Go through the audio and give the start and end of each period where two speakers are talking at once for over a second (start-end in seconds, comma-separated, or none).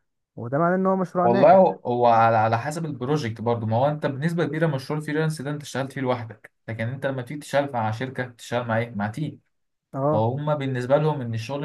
none